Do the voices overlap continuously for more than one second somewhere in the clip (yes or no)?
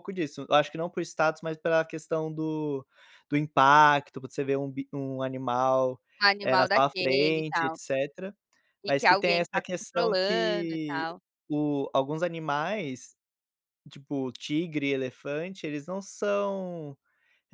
yes